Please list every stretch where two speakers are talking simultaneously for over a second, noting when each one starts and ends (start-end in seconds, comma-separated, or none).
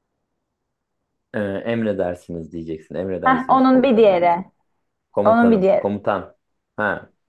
3.2-4.4